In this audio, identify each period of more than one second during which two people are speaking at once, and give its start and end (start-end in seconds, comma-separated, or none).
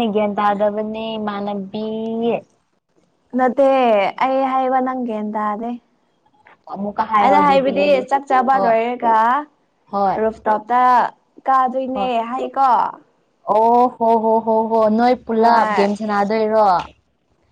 none